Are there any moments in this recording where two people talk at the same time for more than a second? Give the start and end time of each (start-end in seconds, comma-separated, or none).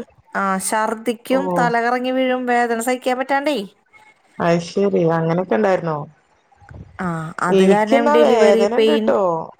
7.6-9.1